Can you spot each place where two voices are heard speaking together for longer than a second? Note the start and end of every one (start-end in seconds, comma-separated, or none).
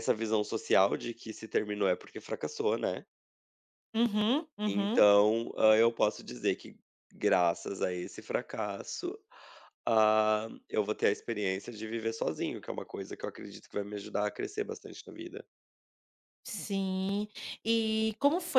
none